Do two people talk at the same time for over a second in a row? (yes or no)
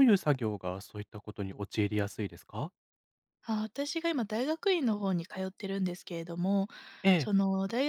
no